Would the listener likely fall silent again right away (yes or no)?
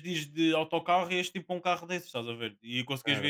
yes